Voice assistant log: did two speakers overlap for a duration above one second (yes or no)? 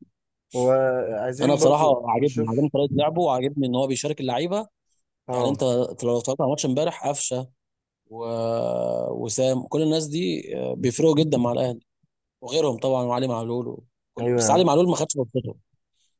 yes